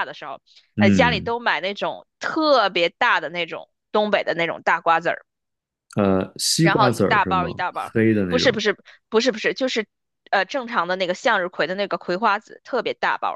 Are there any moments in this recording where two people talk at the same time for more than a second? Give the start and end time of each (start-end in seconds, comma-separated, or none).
6.6-8.6